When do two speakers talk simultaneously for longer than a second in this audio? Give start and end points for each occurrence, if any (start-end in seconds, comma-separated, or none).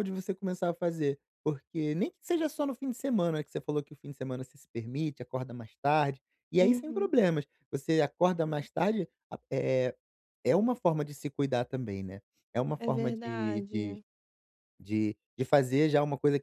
12.8-14.0